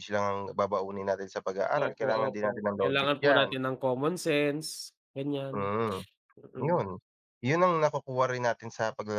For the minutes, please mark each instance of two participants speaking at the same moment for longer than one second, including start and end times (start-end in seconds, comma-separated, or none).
1.7-3.5